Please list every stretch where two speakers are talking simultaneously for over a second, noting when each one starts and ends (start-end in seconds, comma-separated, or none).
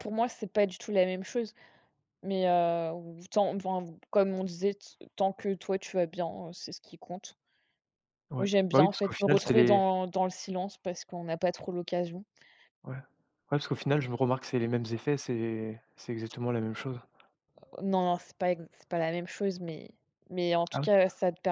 8.3-9.8